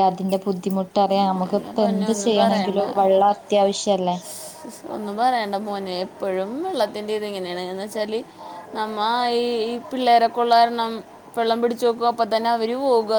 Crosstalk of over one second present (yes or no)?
yes